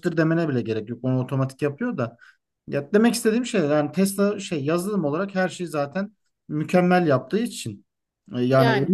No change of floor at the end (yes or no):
yes